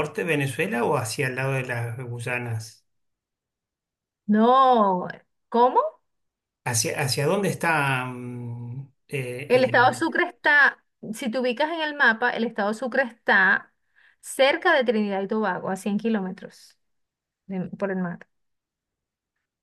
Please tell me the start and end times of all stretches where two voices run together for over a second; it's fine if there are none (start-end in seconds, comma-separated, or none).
none